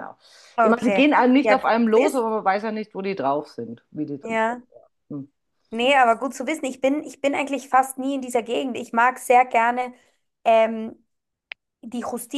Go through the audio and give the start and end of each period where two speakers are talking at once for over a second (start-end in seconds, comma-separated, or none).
0.6-2.2